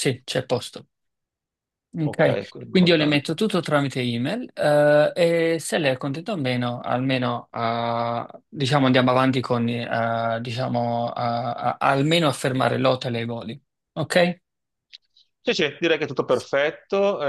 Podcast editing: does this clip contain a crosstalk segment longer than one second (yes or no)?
yes